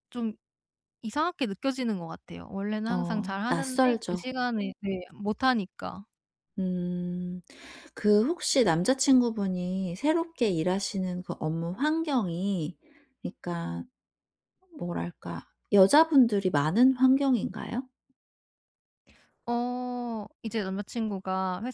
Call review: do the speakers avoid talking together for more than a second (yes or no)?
no